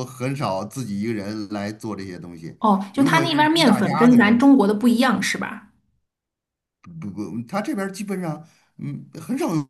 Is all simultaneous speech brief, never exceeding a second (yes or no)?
no